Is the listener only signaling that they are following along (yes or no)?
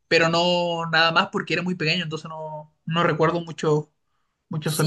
no